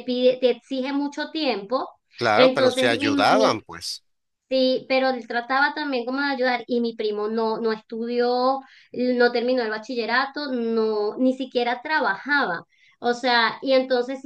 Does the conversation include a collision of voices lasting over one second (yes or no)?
yes